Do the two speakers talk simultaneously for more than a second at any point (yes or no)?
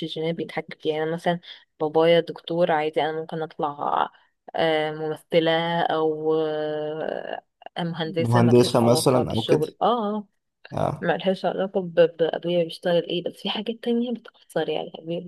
yes